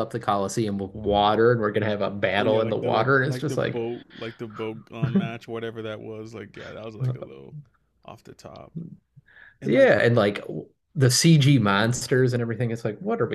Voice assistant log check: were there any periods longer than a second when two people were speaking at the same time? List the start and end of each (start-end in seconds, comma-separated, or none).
2.4-3.8